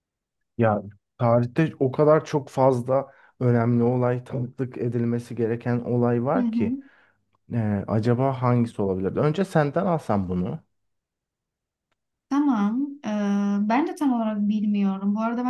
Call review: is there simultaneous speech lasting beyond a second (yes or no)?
no